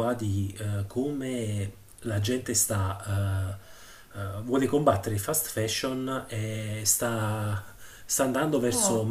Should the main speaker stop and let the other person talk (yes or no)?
no